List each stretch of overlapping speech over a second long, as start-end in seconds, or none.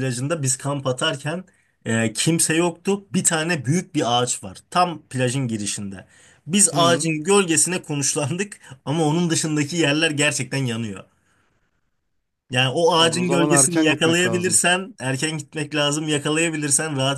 13.0-14.6